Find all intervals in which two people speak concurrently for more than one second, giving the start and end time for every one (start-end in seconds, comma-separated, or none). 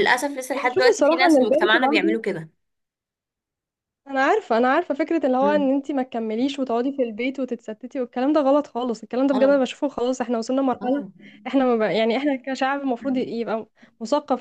0.6-2.2